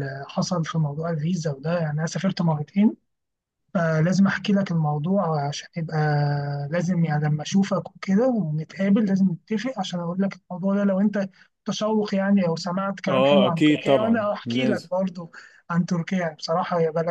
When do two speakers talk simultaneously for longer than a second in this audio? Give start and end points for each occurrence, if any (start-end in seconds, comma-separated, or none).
13.1-14.9